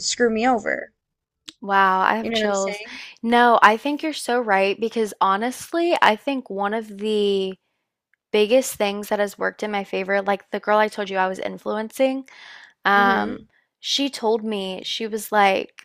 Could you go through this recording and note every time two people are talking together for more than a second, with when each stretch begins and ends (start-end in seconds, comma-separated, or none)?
none